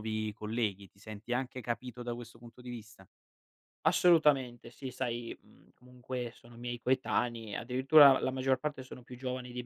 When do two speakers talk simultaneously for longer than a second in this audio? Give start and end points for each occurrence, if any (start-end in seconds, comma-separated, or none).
none